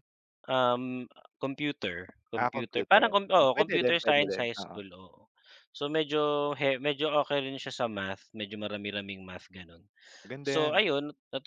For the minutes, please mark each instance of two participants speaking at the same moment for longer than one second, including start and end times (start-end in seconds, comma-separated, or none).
2.3-4.8